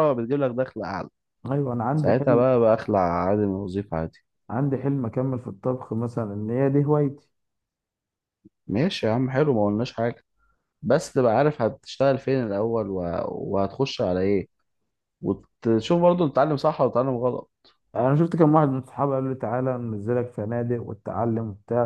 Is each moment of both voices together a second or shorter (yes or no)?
yes